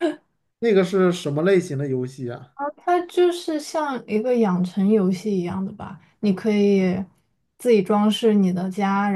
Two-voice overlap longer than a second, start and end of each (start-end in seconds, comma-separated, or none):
none